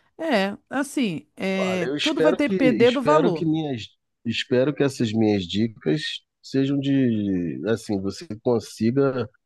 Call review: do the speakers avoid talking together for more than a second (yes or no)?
no